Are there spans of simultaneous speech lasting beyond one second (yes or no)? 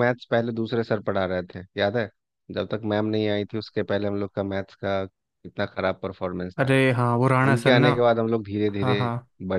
no